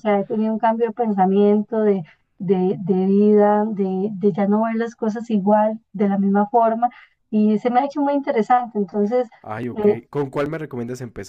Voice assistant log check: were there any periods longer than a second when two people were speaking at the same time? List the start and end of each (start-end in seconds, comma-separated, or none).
none